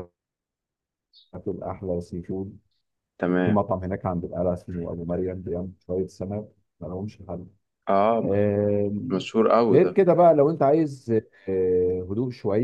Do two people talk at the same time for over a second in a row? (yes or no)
no